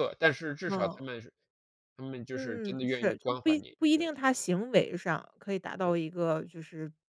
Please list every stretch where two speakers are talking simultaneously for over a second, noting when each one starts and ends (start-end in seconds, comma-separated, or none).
2.3-4.1